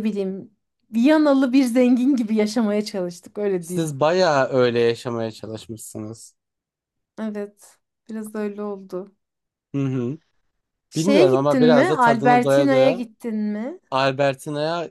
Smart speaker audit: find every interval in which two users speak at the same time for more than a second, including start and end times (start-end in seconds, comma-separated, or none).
10.9-13.1